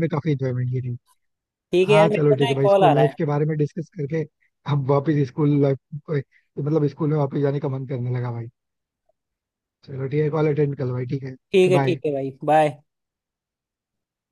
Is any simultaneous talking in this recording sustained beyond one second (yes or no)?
yes